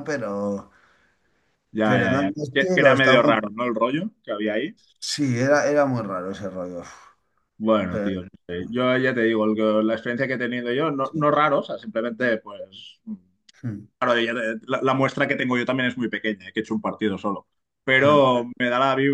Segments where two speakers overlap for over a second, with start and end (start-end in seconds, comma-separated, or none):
1.8-3.3